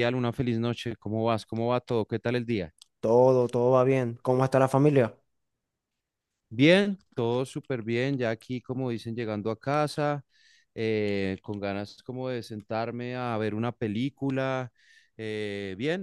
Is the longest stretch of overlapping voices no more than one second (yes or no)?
yes